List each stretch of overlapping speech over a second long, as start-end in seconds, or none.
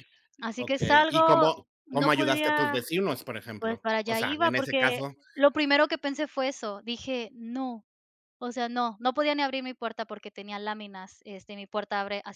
0.6-2.8, 3.6-5.1